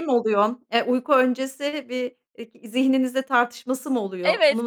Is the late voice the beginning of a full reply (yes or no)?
yes